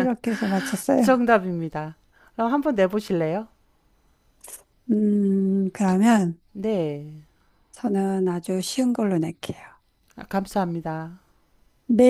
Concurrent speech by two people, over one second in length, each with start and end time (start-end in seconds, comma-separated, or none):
none